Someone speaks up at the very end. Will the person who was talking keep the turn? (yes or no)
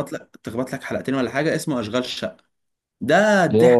no